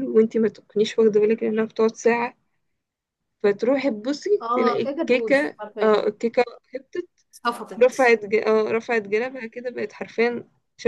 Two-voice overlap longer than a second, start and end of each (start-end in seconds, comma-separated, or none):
4.4-6.1